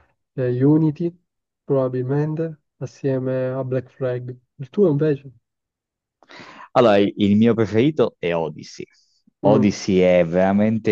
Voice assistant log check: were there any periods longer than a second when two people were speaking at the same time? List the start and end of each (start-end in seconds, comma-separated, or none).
none